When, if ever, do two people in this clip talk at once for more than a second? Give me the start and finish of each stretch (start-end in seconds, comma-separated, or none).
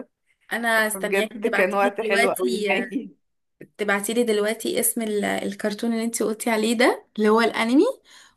0.9-2.7